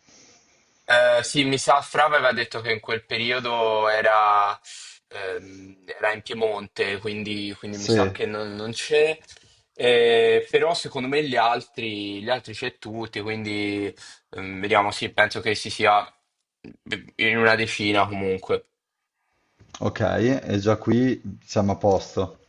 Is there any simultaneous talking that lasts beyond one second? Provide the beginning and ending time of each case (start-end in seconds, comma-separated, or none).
none